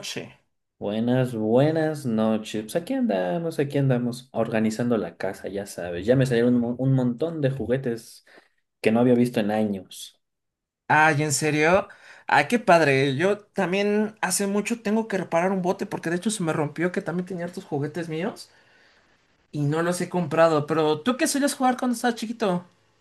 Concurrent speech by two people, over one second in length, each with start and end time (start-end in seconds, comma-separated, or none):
none